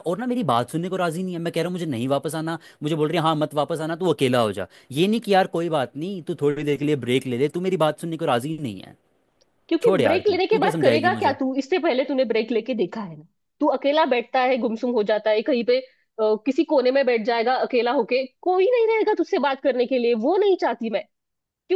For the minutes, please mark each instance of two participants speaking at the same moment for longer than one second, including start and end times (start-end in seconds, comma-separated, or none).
9.8-11.4